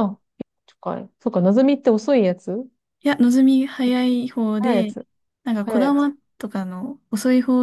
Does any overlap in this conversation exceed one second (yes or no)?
no